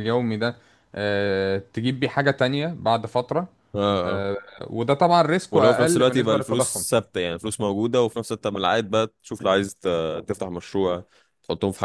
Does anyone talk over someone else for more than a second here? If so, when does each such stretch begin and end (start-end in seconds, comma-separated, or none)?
5.5-6.8